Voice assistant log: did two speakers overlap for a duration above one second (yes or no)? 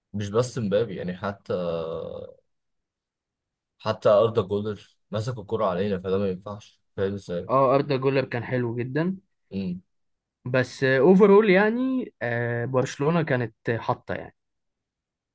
no